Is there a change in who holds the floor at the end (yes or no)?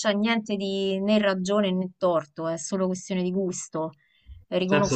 no